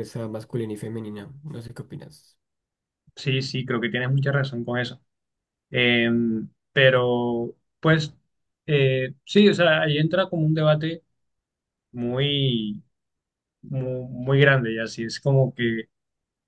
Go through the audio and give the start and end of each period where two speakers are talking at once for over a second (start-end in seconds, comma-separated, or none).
none